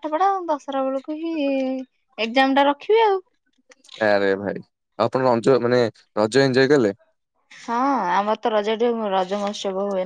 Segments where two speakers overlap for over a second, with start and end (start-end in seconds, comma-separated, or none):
none